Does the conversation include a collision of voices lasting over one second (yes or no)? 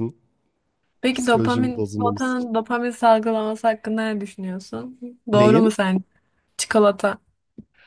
yes